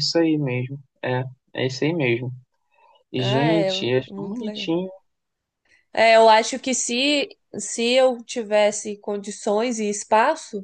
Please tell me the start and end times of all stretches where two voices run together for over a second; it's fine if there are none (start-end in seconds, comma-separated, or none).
3.2-4.7